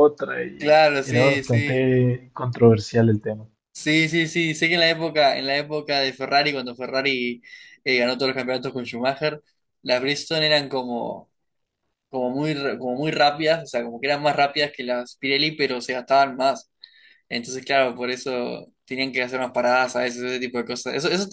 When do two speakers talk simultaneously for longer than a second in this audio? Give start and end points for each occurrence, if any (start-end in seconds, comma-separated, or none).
0.6-1.9